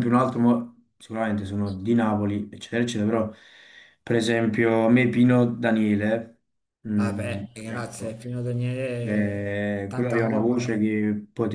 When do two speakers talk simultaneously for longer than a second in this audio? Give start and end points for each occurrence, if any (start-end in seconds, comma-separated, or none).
7.0-8.2, 9.0-10.6